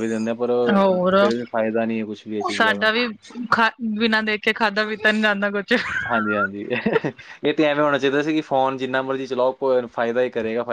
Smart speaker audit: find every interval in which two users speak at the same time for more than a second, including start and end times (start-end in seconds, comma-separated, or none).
none